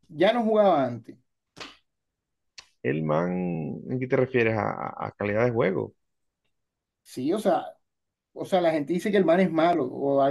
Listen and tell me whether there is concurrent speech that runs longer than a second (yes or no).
no